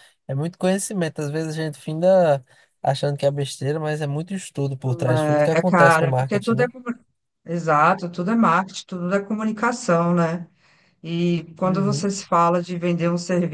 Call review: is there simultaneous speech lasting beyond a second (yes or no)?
yes